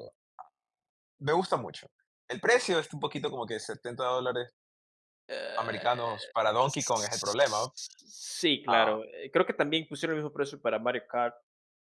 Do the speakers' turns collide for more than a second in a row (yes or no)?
yes